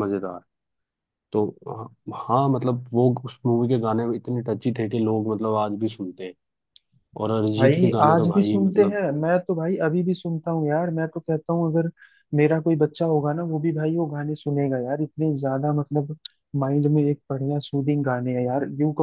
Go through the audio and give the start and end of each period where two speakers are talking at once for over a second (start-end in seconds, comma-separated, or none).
7.6-9.0